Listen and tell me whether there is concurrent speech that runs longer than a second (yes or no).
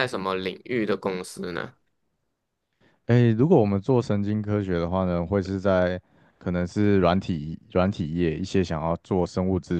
no